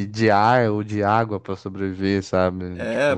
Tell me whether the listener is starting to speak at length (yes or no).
yes